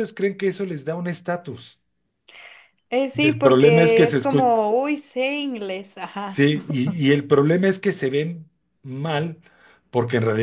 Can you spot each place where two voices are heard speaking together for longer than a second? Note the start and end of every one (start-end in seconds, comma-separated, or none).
3.1-4.5